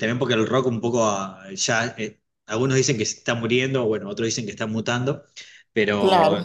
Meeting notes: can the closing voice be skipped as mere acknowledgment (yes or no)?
yes